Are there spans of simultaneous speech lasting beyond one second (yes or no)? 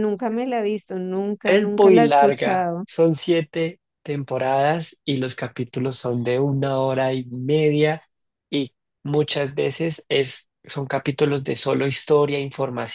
yes